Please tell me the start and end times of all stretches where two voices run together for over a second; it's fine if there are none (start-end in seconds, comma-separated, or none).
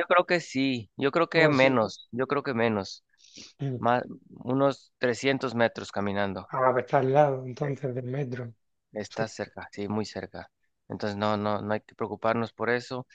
none